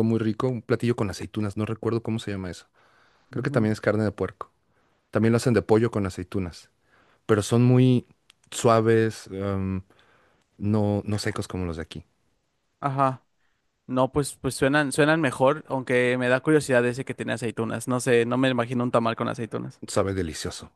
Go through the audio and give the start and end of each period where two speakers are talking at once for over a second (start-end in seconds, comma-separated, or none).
none